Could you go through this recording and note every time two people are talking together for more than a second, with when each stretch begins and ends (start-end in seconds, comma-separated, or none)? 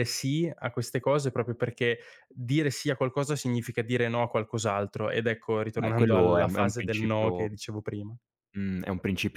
5.8-7.5